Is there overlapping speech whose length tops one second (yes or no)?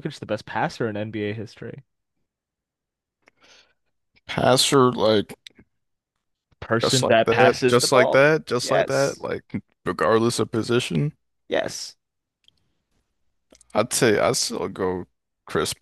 yes